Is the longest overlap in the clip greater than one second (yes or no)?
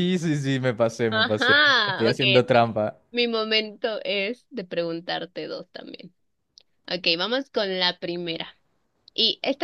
yes